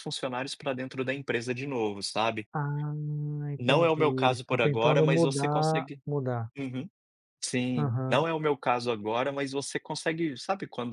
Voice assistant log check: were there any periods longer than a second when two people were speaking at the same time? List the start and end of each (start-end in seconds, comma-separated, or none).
3.6-6.0